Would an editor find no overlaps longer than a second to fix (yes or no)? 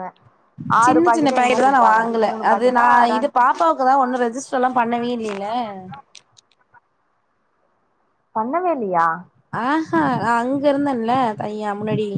no